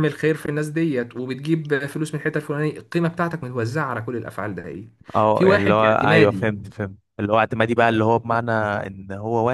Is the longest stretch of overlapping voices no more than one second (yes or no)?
no